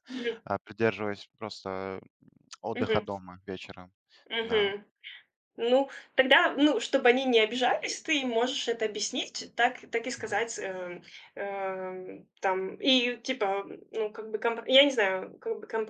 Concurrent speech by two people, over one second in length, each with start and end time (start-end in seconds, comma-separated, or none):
none